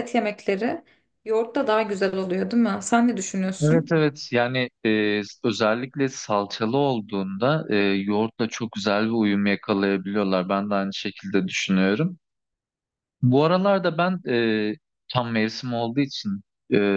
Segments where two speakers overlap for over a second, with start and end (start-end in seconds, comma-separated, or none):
none